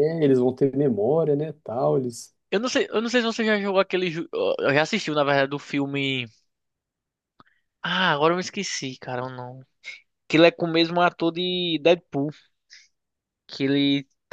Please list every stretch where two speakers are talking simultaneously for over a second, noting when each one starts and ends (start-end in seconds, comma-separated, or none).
none